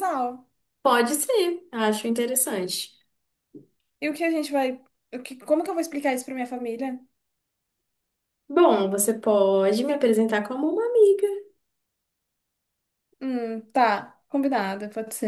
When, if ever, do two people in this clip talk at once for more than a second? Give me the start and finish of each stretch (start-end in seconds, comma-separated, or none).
none